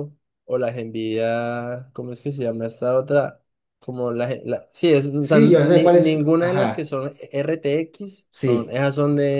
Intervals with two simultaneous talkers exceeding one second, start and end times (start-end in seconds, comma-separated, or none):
5.2-6.9